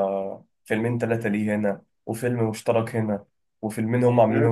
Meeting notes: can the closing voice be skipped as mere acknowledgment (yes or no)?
no